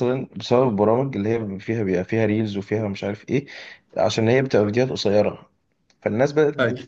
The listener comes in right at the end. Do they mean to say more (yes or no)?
no